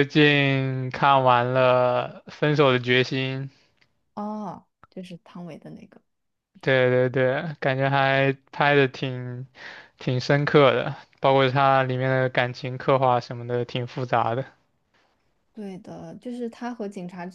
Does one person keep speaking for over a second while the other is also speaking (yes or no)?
no